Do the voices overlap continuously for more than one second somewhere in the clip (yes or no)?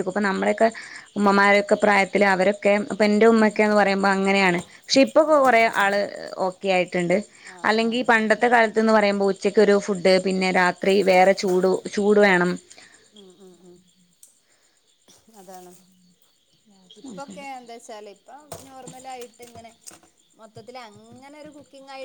no